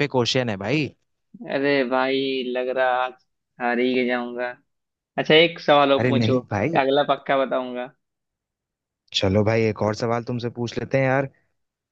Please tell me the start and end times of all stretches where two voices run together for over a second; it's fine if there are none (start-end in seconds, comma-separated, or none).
none